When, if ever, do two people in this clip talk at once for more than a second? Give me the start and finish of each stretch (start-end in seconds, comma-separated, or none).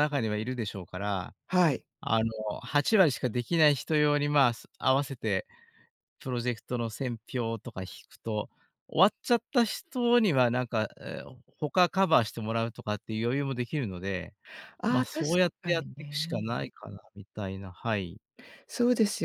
14.9-16.5